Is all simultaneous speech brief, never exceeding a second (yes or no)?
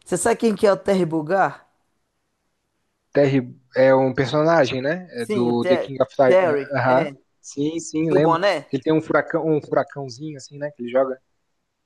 no